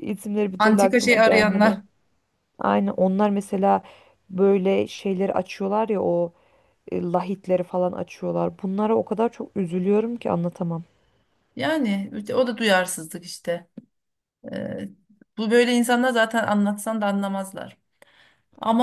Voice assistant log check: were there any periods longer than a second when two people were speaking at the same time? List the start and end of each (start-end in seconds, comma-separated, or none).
0.6-1.8